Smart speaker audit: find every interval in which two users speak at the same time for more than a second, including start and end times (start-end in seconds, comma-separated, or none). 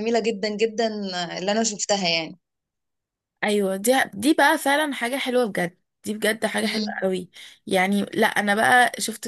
none